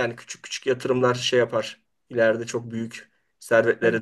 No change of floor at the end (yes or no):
no